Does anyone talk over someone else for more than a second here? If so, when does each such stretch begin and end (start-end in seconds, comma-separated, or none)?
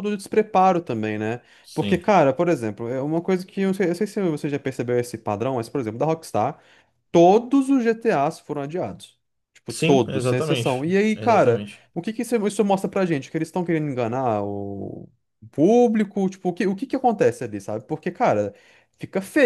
9.7-11.8